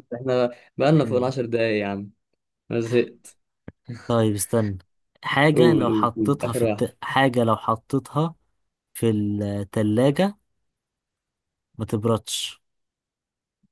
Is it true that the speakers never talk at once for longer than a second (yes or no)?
no